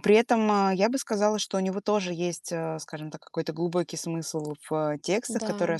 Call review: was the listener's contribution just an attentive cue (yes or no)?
yes